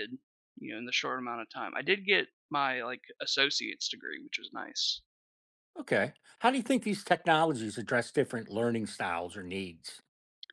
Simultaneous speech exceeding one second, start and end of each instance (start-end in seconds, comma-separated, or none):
none